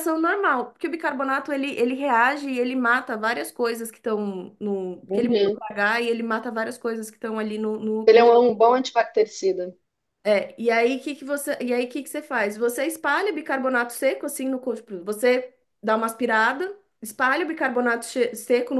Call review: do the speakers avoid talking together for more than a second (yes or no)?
yes